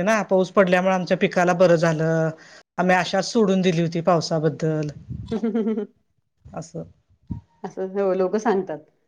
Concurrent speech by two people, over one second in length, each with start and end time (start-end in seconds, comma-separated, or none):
none